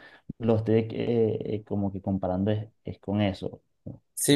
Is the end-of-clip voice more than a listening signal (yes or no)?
yes